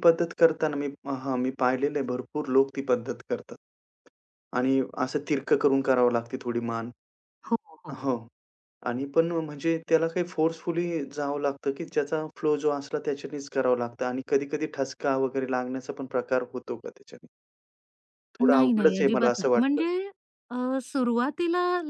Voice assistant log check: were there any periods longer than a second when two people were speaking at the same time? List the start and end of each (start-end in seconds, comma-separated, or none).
18.4-19.9